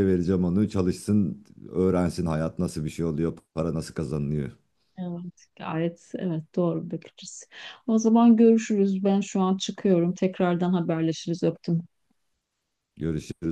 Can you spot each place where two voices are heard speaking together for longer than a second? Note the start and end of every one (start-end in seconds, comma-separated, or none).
none